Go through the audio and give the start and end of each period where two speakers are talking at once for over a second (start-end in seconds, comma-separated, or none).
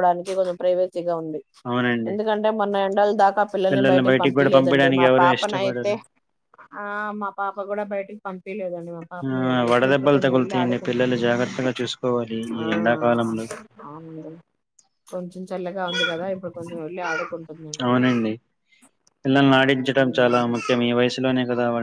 4.1-5.9, 9.3-11.2